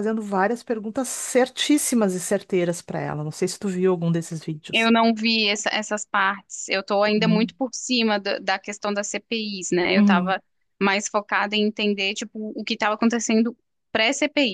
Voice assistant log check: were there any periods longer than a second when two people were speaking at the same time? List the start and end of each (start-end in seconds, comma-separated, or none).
none